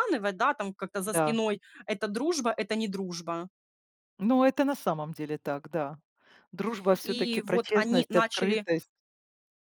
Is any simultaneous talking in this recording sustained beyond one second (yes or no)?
yes